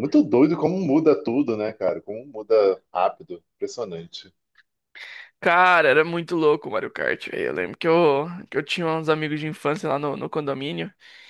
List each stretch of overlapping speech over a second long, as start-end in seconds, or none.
none